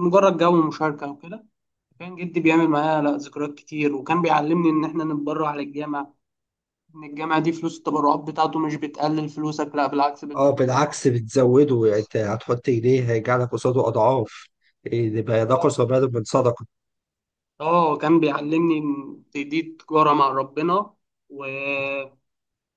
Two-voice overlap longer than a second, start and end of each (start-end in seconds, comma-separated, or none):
none